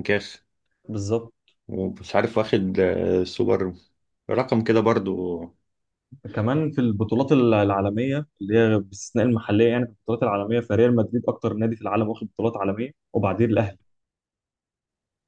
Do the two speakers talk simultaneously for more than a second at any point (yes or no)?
no